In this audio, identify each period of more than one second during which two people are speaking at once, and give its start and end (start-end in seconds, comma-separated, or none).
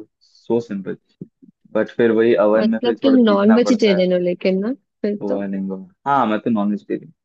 2.6-4.0